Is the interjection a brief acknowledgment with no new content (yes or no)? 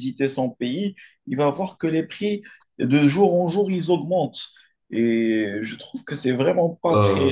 yes